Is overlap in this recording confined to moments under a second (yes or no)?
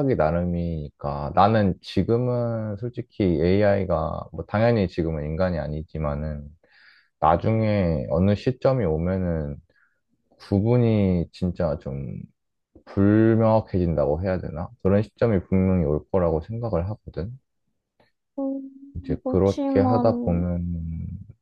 no